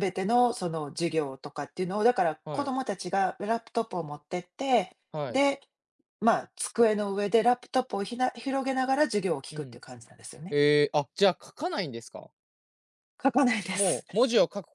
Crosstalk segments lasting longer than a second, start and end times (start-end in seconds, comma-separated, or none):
none